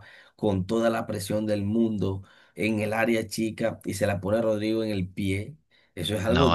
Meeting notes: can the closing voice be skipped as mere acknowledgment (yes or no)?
yes